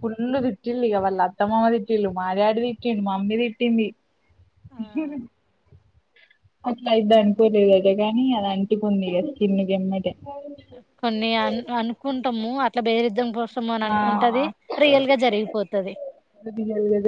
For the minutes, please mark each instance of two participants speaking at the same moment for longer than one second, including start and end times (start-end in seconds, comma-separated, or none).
none